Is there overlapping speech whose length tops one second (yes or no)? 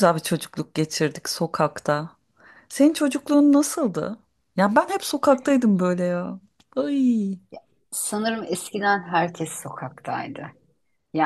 no